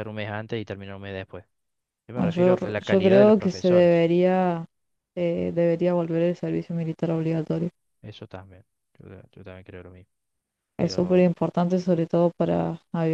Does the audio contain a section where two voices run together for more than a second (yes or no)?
yes